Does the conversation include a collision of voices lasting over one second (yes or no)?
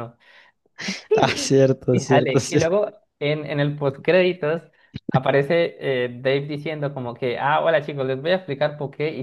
yes